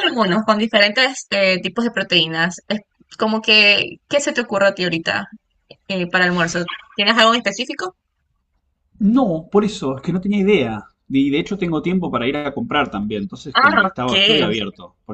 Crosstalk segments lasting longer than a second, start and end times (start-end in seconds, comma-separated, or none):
none